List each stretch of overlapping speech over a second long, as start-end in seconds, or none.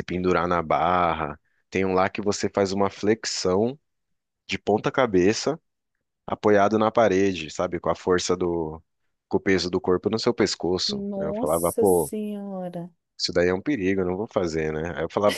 10.9-12.1